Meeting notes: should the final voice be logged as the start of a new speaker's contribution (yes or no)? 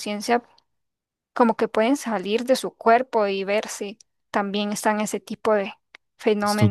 yes